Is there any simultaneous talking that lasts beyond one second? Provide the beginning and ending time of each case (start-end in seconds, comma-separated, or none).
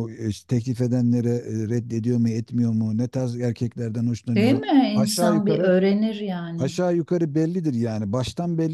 4.3-5.7